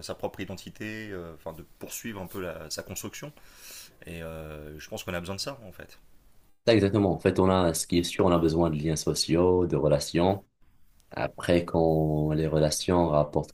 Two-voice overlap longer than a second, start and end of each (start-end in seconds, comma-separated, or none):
none